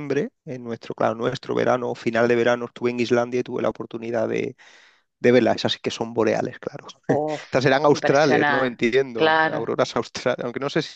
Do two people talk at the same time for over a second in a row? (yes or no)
yes